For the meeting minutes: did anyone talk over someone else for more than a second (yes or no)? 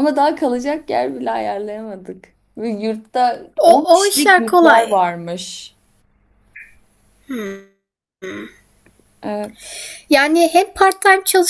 yes